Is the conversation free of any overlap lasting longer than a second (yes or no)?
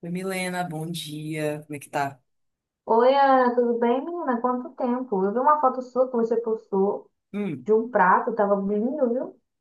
yes